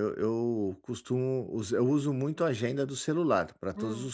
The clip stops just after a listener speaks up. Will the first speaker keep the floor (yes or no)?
no